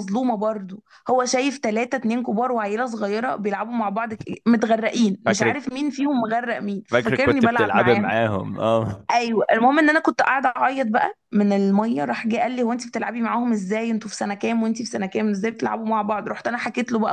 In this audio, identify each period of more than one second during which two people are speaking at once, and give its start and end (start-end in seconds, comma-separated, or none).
6.9-8.1